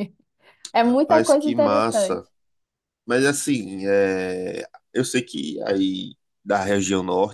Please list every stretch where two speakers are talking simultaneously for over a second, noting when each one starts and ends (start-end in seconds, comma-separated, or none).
0.8-2.2